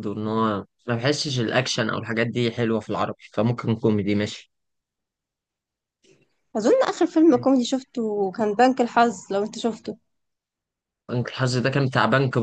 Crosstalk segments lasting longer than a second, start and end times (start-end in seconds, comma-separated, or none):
none